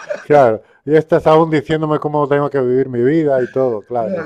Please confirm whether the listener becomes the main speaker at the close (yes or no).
yes